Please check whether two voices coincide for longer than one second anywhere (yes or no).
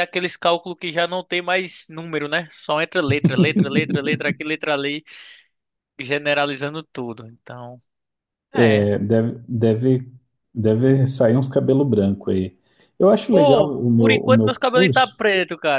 yes